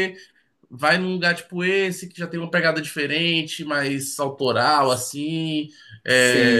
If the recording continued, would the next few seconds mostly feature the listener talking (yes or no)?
yes